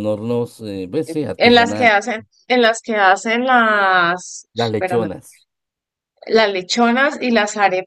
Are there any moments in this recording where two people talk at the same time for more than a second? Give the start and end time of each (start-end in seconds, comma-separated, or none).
none